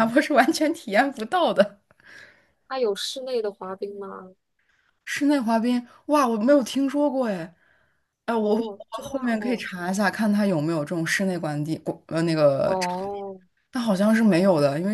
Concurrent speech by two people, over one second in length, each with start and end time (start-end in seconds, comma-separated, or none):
8.4-9.6